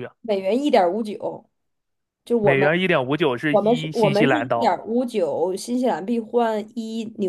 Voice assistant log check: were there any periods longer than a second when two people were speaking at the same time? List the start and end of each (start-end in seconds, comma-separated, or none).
3.5-4.8